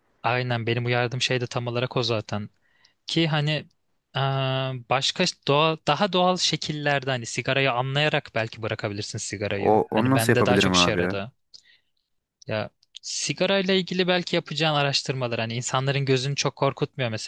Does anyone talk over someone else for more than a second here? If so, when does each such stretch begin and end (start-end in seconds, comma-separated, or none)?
9.5-11.1